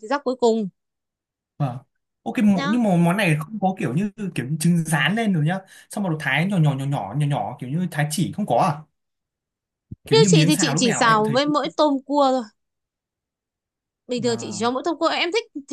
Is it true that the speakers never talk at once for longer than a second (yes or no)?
no